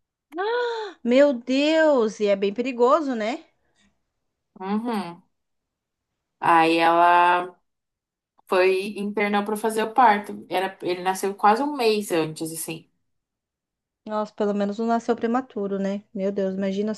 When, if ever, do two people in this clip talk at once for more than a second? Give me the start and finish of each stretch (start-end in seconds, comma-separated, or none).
none